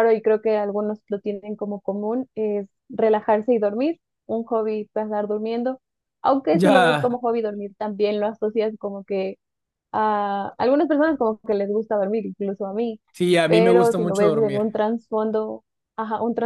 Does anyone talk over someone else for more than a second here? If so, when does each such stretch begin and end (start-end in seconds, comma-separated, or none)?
13.5-14.8